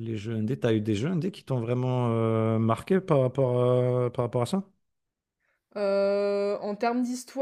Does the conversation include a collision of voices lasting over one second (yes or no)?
no